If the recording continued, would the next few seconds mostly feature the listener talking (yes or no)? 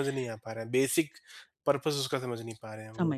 yes